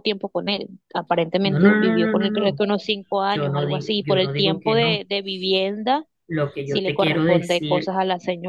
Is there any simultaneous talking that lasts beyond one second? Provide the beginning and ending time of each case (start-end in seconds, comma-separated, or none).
1.4-2.6, 3.3-5.0, 6.6-7.9